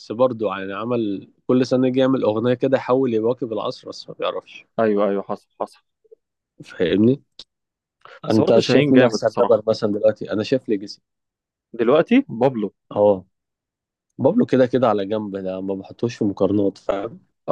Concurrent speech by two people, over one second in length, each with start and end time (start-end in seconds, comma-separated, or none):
8.3-9.6